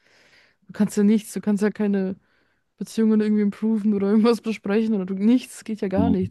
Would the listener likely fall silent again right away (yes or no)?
no